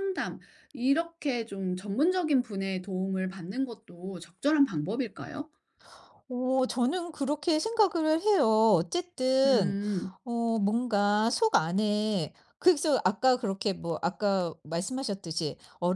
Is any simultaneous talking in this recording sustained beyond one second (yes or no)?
no